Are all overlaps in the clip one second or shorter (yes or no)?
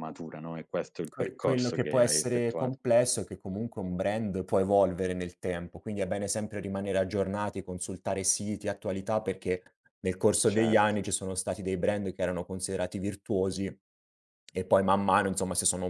no